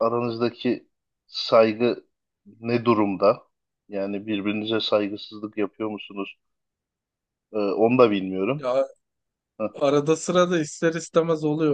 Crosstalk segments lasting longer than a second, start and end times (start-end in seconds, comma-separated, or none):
none